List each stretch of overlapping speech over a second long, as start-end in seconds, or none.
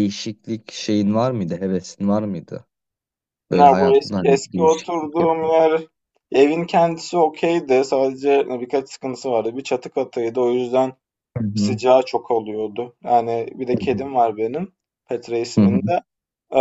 3.5-5.3